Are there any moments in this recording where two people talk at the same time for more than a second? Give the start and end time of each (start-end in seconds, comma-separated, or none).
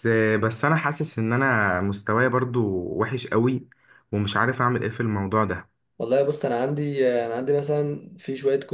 none